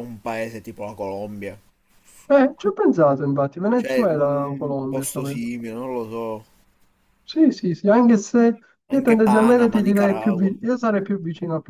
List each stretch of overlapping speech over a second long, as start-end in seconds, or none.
3.7-5.4, 8.9-10.6